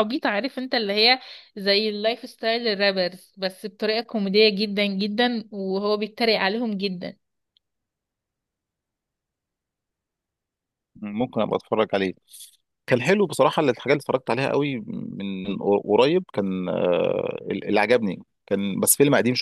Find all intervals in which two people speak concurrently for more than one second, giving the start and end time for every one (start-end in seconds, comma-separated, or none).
none